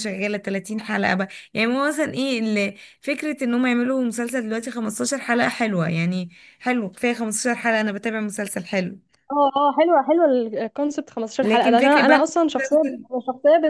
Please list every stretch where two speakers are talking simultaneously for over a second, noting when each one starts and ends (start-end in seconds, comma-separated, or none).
11.4-12.8